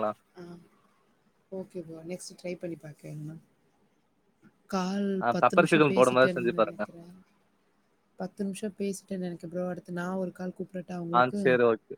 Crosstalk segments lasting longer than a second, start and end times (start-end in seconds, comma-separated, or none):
5.2-6.8